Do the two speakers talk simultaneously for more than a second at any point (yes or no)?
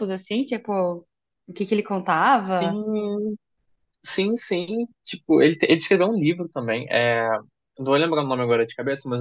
no